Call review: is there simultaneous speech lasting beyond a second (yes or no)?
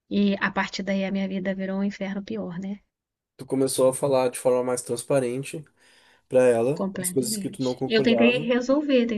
yes